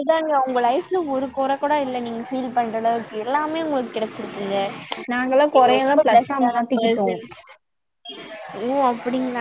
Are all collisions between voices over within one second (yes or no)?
no